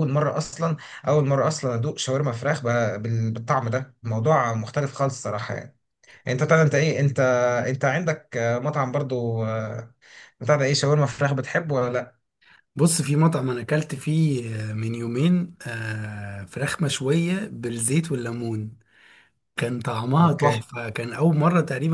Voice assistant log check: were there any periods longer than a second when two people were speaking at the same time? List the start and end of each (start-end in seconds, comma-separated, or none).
none